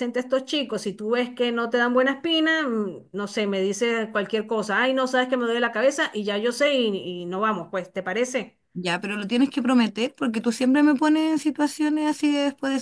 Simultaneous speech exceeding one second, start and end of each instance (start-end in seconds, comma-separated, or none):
none